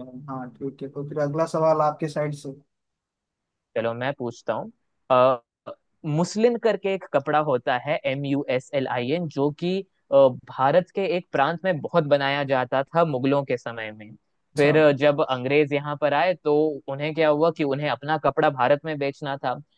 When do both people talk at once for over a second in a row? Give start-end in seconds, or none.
none